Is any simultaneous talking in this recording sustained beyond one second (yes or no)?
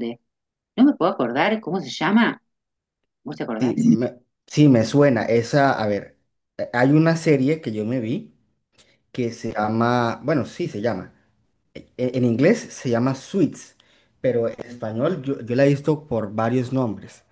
no